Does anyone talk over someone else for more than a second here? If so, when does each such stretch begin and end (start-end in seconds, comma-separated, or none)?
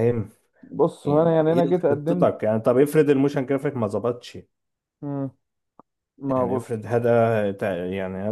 1.1-2.3